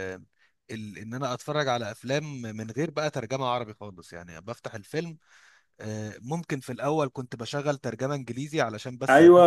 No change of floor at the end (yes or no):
no